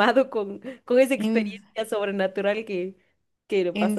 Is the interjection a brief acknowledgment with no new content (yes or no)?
no